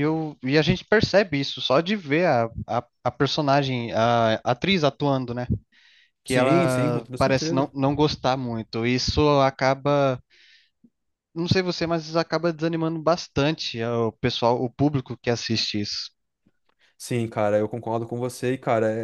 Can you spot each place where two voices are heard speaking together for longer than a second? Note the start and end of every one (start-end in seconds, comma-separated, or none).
6.2-7.7